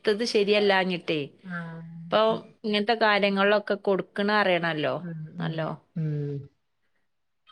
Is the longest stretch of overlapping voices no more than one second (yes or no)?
yes